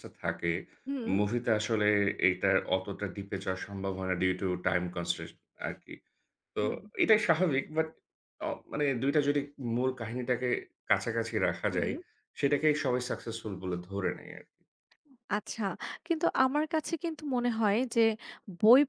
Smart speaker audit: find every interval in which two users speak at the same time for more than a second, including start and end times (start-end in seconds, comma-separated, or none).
none